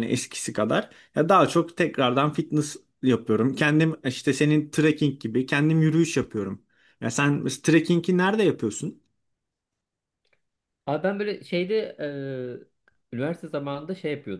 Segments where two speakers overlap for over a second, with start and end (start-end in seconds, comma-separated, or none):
none